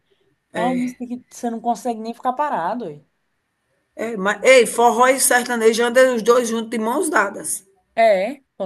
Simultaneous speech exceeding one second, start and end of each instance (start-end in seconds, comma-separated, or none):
none